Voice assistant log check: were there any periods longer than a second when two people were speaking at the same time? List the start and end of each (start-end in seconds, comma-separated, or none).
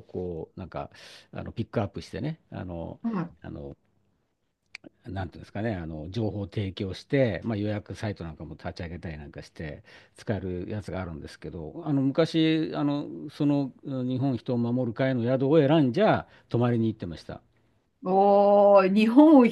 none